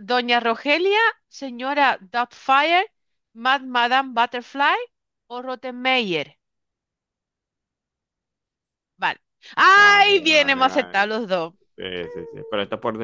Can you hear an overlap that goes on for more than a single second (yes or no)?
yes